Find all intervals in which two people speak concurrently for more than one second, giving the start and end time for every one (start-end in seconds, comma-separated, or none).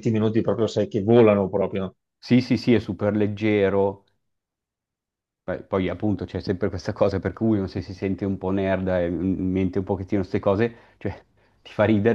none